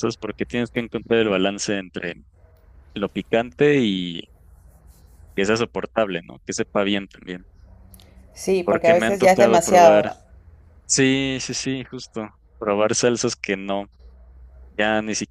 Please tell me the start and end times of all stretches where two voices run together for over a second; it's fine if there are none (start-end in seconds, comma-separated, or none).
8.6-10.1